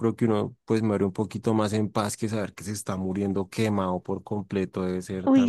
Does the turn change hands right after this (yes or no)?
yes